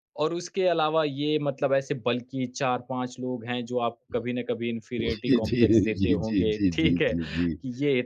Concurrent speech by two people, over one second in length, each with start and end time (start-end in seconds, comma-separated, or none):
5.2-7.5